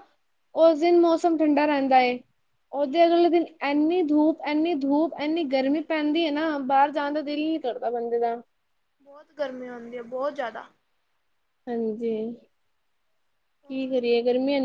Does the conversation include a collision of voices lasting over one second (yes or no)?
no